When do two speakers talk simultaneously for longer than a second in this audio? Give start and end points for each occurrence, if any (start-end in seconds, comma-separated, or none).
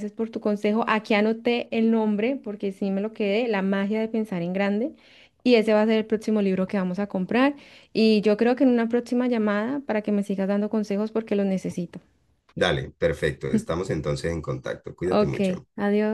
none